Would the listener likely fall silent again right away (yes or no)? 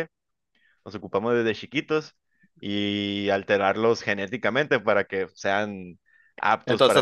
no